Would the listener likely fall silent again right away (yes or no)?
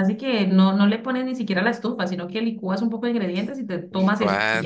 no